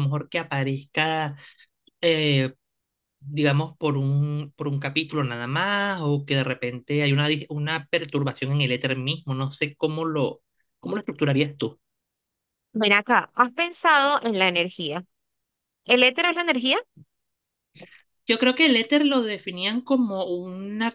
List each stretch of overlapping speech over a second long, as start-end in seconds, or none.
none